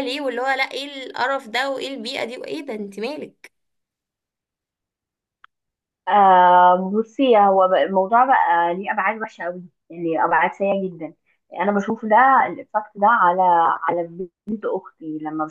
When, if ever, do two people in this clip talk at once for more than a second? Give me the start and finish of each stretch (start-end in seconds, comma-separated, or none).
none